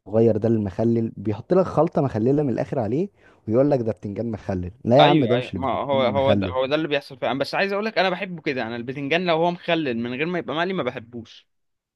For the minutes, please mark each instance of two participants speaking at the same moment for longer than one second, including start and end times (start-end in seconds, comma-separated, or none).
5.0-6.5